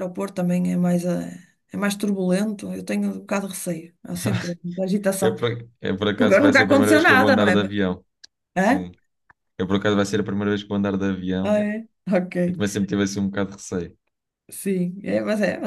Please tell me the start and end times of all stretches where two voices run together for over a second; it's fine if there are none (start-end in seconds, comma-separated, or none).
6.2-7.7